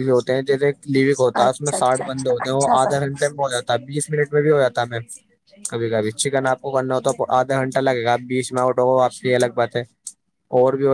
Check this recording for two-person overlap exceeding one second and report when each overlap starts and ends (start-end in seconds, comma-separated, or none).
1.4-3.1